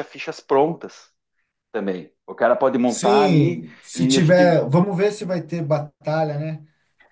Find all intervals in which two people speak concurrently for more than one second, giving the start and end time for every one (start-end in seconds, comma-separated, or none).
2.8-4.6